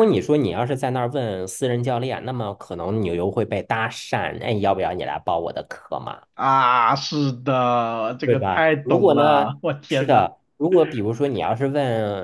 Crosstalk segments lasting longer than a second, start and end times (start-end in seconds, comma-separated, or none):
8.2-10.3